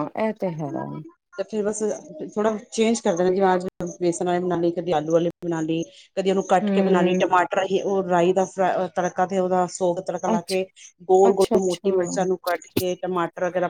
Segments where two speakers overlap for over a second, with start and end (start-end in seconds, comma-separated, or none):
none